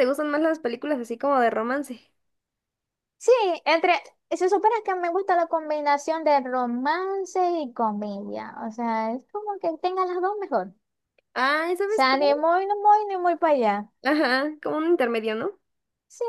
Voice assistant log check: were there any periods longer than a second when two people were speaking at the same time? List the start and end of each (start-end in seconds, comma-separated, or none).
none